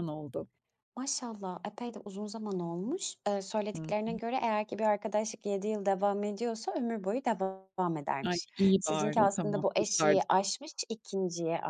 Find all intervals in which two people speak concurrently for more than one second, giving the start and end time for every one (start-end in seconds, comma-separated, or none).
8.2-10.3